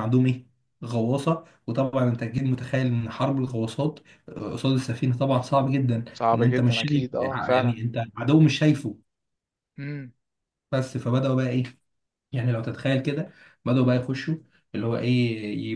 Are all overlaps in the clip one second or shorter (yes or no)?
no